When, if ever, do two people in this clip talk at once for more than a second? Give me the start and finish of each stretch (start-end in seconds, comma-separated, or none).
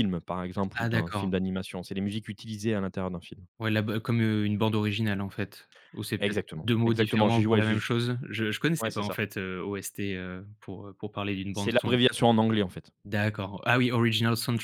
6.2-7.8